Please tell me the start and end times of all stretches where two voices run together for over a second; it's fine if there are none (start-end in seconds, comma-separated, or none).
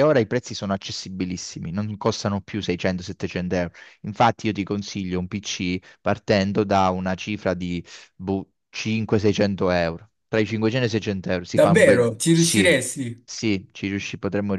11.5-12.8